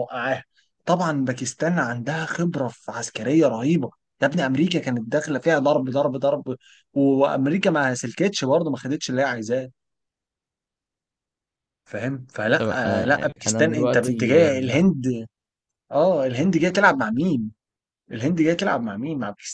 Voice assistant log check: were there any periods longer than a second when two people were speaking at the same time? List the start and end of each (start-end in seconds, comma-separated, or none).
12.6-14.8